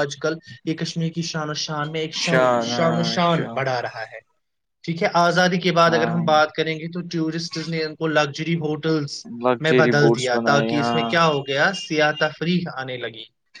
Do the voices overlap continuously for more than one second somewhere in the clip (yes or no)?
yes